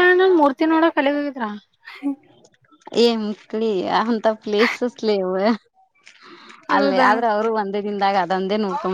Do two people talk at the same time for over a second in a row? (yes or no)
no